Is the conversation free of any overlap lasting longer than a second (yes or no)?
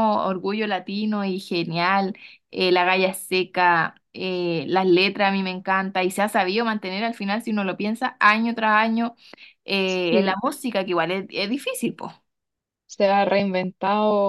yes